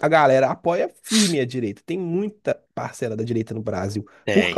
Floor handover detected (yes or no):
no